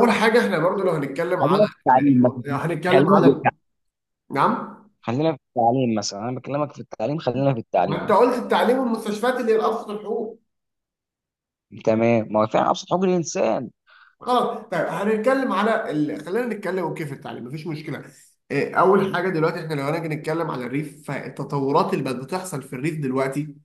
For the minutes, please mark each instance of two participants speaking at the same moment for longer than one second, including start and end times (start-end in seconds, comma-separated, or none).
1.4-3.4